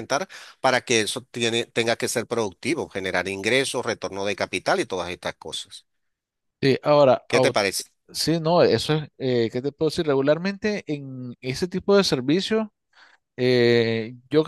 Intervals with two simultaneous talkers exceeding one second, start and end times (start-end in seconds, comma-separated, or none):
none